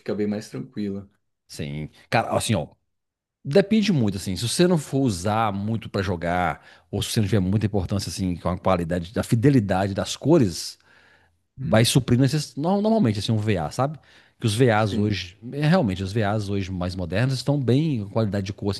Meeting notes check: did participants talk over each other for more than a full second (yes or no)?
no